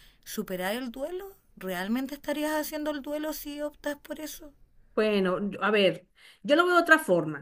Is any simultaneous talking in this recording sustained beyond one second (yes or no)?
no